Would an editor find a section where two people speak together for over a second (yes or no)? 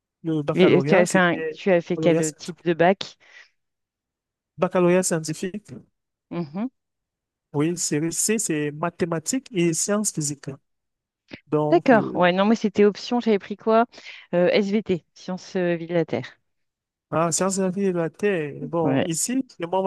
yes